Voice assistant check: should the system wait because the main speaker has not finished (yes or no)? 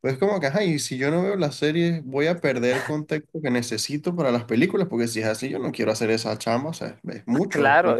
no